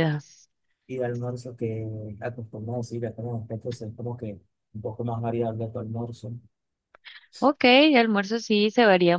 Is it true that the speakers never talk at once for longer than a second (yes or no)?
yes